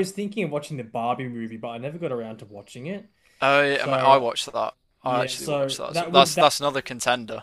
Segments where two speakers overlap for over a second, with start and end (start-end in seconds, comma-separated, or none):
5.0-6.5